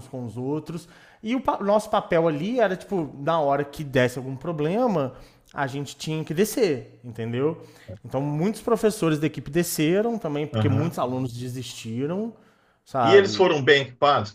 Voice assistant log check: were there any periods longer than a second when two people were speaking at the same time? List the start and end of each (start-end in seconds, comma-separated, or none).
none